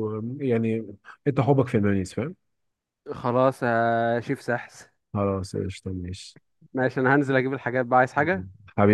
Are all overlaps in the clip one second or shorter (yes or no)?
yes